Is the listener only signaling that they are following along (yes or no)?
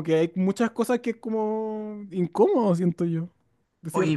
no